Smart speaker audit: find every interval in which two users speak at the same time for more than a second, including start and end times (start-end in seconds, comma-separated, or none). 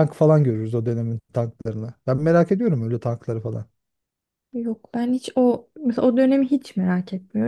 none